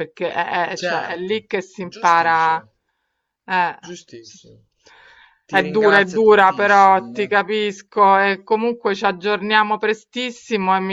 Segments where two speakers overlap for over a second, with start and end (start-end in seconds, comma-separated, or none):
0.8-2.6, 5.5-7.3